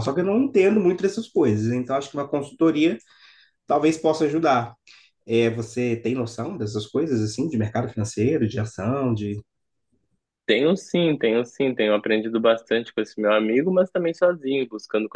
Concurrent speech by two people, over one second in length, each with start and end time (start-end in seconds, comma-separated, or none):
none